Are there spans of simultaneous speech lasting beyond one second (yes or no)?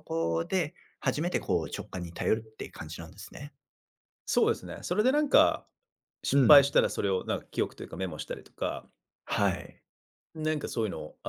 no